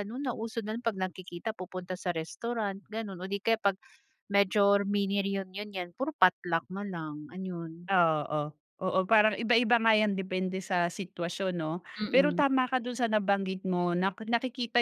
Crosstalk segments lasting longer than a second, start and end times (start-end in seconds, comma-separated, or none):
none